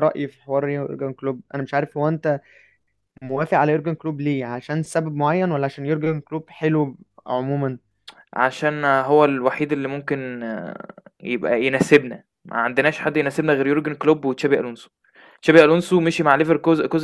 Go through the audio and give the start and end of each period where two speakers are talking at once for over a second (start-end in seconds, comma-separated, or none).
none